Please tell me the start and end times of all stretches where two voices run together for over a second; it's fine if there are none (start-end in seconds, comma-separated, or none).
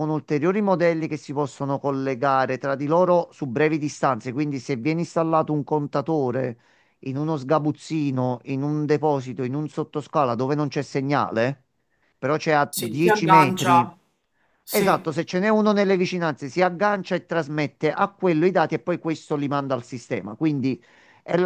12.7-13.9